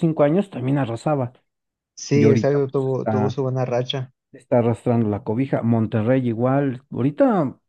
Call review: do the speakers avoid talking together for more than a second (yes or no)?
no